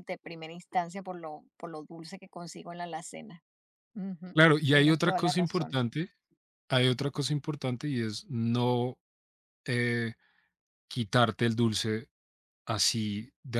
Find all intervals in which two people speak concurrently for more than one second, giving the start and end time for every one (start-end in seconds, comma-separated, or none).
4.3-5.8